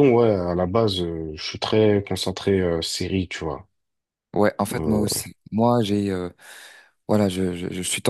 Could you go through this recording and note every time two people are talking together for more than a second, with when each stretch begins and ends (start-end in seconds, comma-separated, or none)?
none